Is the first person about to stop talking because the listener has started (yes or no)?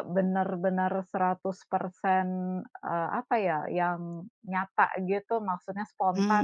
yes